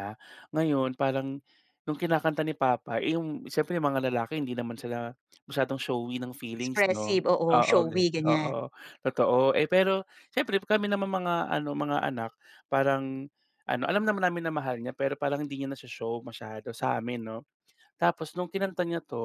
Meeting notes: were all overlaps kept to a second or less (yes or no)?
no